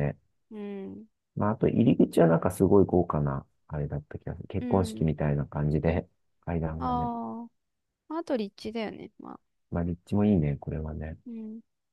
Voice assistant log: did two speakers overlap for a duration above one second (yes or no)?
no